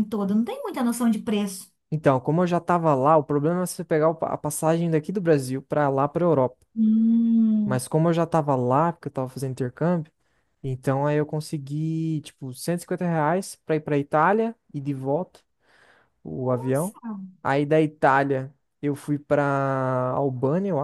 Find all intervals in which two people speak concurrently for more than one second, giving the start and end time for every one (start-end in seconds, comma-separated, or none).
none